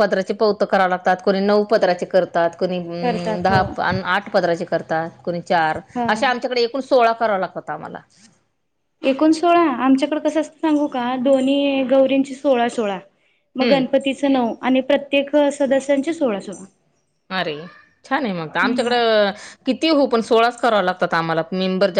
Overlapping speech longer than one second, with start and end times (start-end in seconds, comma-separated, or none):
none